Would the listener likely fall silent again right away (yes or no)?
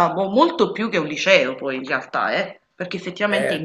no